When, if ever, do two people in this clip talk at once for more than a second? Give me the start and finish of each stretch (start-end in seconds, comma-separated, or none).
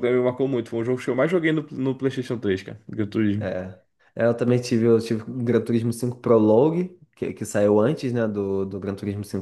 none